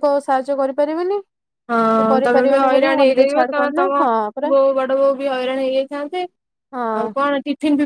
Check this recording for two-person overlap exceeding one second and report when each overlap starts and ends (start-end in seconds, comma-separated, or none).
2.3-4.0